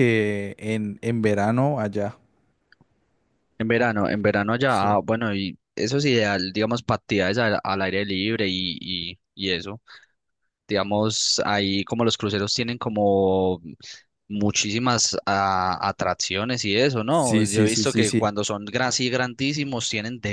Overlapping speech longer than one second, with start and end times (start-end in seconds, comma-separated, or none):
17.1-18.3